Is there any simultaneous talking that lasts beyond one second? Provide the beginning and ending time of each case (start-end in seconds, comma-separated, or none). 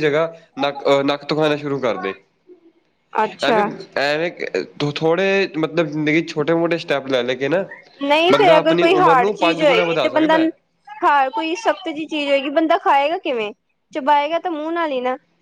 8.3-10.4